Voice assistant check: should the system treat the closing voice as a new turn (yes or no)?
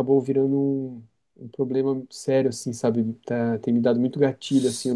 no